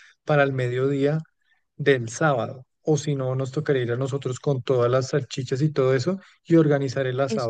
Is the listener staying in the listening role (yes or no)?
yes